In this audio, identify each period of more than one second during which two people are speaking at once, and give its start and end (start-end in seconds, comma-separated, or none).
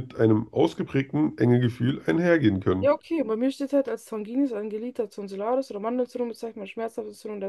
none